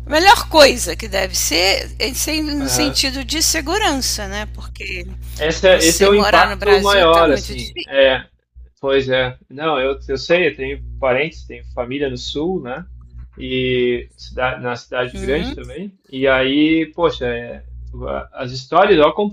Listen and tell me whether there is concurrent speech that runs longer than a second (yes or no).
yes